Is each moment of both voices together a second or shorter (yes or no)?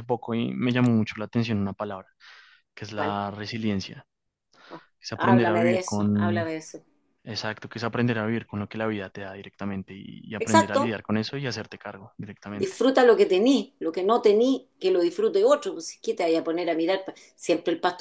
no